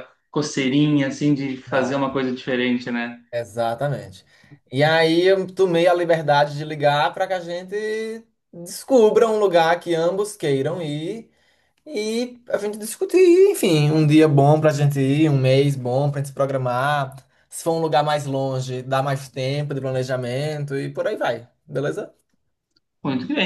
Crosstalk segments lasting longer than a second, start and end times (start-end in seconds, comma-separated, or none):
none